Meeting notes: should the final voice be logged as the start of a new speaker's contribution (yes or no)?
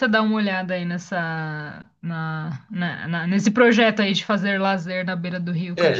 yes